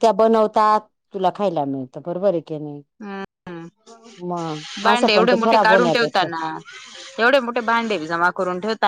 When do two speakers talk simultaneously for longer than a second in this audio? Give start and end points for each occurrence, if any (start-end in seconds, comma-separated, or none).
4.9-6.3